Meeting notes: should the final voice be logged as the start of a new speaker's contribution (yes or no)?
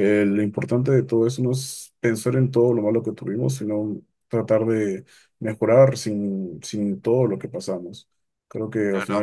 no